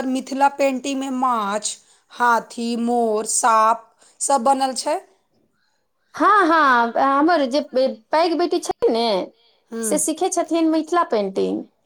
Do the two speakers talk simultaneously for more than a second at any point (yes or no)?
no